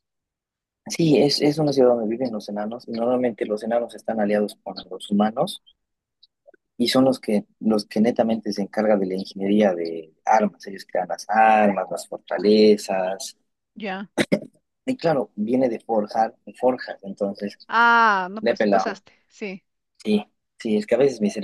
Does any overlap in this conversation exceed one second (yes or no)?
no